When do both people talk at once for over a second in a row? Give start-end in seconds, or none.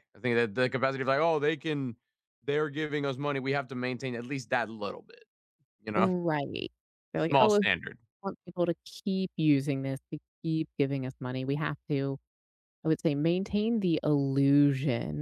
none